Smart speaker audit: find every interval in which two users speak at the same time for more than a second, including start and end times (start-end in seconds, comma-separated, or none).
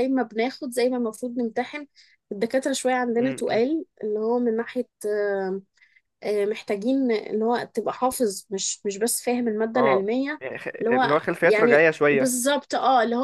10.8-12.4